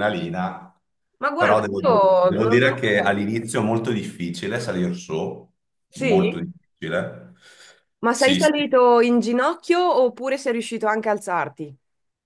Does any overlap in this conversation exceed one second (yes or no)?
yes